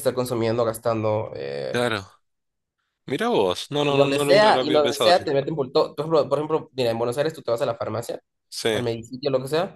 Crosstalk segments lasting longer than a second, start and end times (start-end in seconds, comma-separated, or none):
3.9-5.3